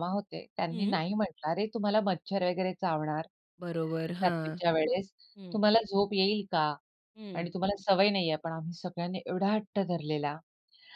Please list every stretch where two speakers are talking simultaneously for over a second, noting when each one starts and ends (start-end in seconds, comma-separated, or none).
none